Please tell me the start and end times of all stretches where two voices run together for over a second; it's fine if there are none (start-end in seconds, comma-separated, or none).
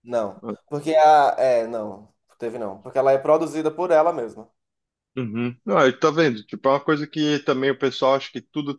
none